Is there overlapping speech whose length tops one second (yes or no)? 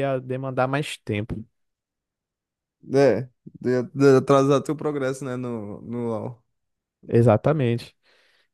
no